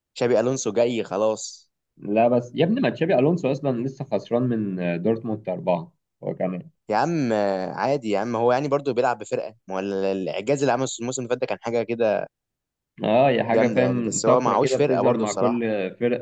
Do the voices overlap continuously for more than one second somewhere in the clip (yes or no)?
yes